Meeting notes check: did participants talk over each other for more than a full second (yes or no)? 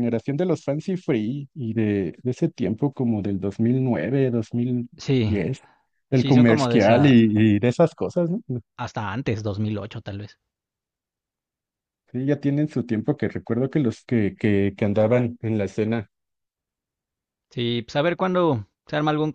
yes